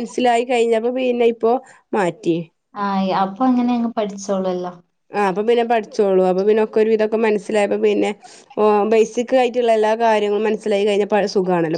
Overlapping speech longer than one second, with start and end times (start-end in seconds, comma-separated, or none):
none